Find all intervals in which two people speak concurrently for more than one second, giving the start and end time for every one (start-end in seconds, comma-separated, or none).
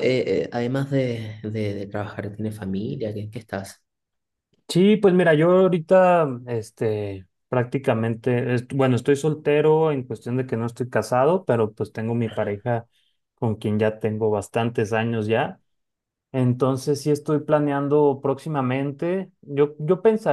none